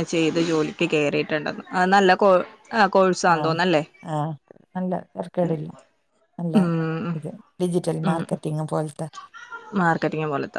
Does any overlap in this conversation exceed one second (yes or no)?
no